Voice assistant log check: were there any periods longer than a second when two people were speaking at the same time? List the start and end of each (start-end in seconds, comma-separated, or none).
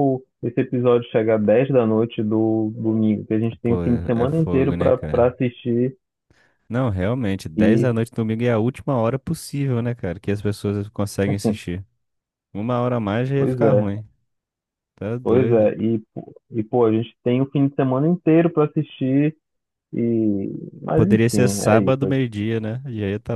3.6-5.3, 20.9-22.2